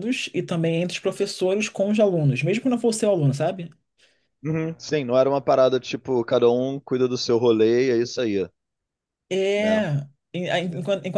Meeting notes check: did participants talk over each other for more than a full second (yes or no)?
no